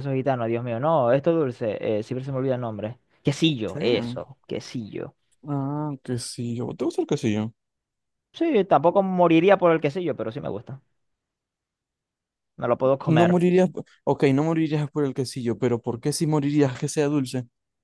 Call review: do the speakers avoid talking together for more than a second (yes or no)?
yes